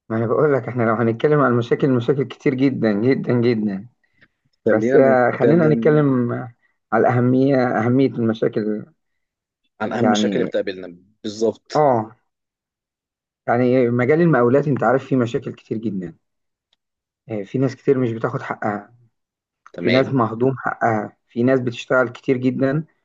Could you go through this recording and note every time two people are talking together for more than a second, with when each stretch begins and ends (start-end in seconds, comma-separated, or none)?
4.7-6.0